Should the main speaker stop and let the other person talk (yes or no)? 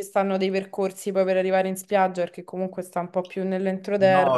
yes